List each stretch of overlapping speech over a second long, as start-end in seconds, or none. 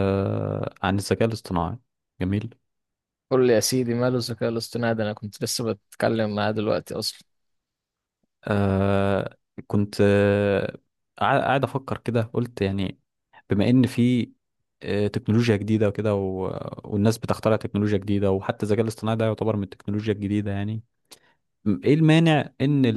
none